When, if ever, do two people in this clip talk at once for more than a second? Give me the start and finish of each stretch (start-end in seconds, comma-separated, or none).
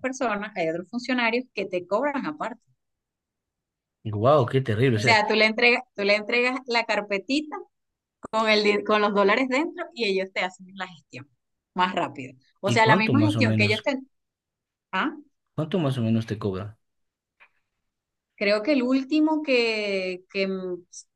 12.7-13.9